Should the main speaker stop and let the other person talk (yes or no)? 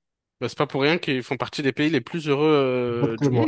yes